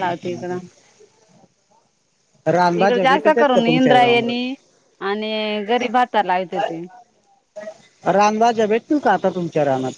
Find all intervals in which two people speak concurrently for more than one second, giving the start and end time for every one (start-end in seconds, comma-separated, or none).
2.8-4.5